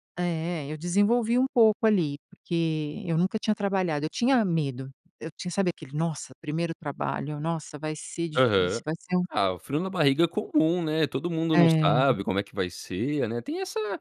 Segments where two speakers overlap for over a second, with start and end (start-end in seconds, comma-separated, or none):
none